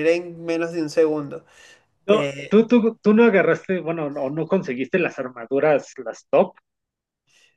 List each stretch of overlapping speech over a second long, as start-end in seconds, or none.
none